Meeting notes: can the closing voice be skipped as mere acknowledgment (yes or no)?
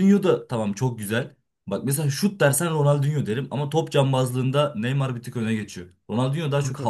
yes